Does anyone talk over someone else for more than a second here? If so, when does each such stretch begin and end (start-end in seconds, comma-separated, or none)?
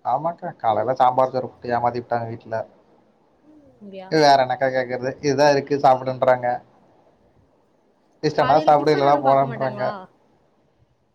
8.4-9.8